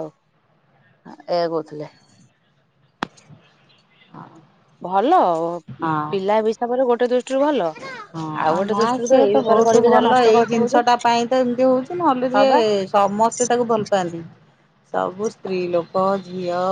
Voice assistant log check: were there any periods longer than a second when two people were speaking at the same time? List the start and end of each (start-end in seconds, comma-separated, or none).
8.6-10.8